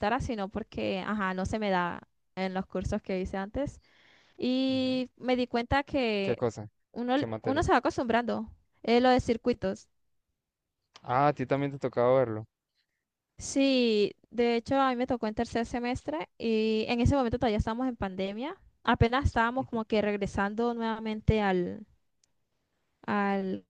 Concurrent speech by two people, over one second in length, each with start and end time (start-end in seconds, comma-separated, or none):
none